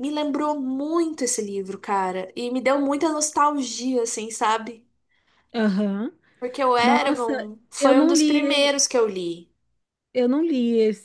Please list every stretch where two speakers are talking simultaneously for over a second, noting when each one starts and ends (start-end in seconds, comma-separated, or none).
6.8-8.7